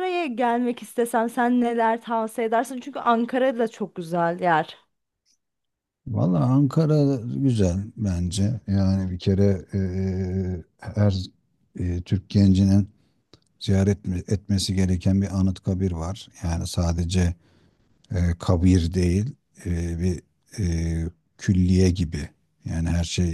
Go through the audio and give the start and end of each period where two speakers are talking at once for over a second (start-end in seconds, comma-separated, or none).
none